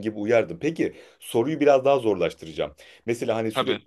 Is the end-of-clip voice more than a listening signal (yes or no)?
no